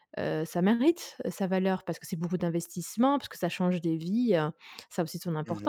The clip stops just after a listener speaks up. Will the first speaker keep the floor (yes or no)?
no